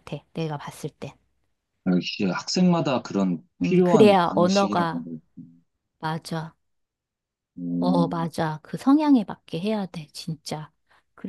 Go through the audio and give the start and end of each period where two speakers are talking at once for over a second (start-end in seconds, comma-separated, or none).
3.6-5.0